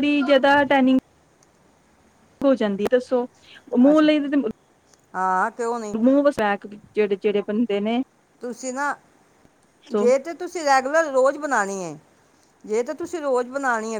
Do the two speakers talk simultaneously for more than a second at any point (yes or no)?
no